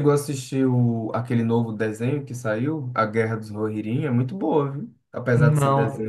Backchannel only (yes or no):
no